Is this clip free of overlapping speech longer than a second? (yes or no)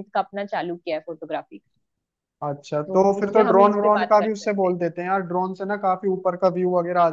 no